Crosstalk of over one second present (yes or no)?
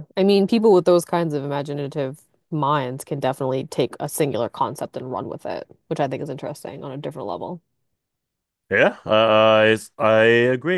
no